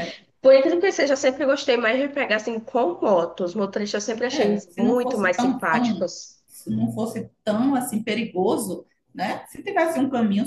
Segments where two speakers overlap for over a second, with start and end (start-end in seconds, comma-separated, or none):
4.3-6.1